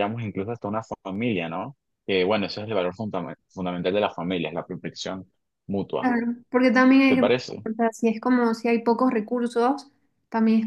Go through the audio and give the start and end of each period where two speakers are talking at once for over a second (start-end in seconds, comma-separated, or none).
none